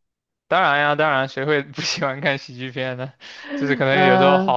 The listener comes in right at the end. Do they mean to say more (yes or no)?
no